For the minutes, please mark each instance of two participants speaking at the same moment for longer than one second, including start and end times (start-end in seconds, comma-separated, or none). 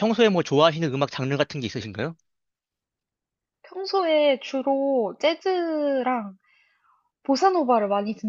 none